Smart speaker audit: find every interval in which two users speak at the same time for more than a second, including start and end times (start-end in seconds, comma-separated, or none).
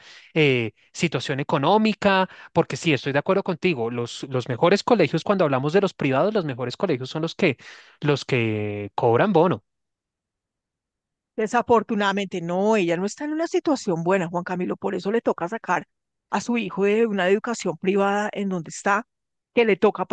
none